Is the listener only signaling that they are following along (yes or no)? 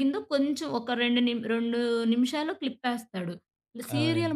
yes